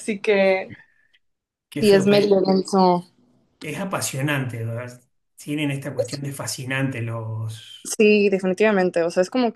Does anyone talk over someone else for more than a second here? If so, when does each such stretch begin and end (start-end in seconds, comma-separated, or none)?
none